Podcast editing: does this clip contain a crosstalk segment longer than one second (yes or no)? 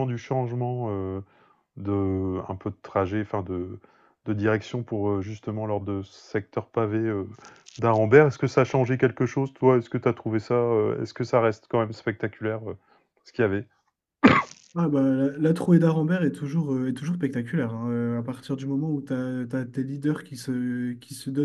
no